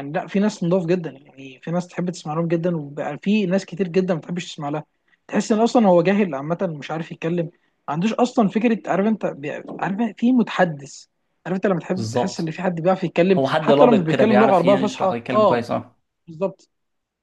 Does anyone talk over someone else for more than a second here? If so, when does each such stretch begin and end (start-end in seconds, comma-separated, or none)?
13.3-15.6